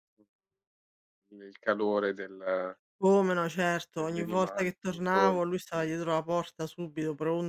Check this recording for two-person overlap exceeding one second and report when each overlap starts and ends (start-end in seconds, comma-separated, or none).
3.9-5.8